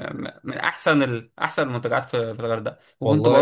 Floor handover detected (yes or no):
no